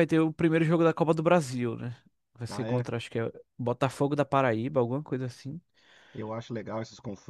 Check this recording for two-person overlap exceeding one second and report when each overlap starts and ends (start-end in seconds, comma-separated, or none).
none